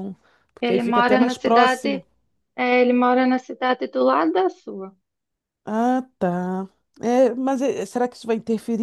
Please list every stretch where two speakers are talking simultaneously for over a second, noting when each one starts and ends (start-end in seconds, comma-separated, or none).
0.6-2.0